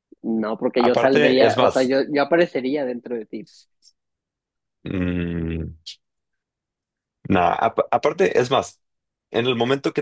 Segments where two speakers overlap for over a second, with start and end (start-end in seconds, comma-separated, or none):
0.8-2.0